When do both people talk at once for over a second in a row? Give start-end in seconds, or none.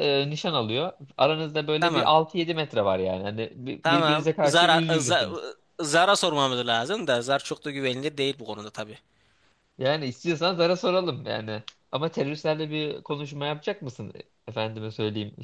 3.8-5.3